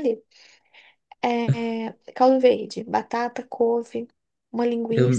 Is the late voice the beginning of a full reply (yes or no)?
yes